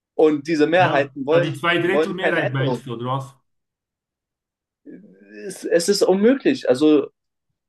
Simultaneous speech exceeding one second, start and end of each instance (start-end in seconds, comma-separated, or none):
0.8-2.8